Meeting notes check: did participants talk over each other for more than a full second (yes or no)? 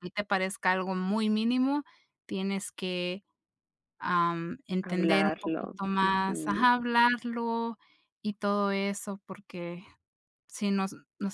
yes